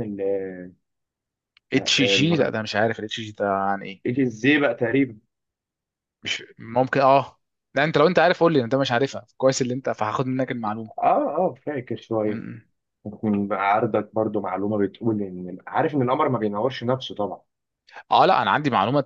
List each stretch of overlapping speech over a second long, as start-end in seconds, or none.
none